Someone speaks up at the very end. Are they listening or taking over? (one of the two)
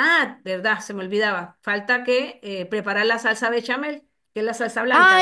taking over